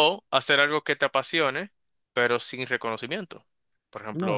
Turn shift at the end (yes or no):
yes